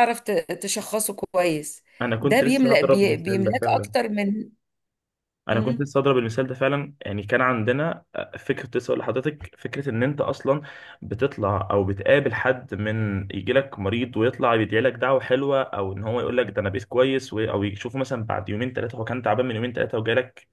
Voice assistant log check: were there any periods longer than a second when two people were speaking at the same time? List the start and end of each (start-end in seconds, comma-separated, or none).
2.2-3.9